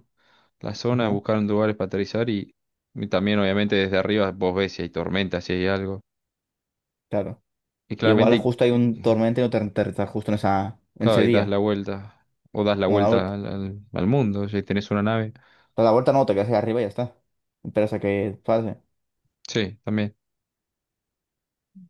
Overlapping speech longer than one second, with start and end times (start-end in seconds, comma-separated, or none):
none